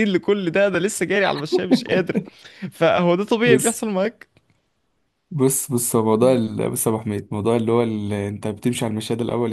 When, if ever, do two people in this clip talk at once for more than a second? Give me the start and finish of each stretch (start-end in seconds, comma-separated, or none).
none